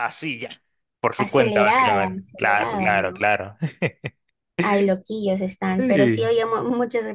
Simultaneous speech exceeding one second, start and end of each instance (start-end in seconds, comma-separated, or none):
1.2-3.2